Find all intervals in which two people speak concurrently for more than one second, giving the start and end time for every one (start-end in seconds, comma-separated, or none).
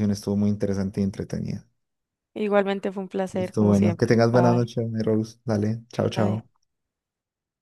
3.3-4.7